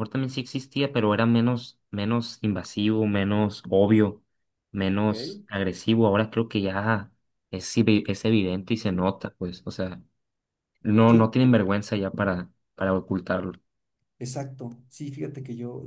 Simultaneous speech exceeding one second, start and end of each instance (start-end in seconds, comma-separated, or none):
none